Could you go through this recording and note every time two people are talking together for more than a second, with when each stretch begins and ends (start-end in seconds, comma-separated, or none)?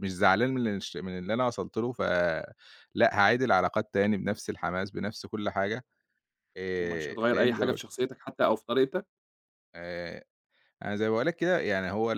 6.8-8.0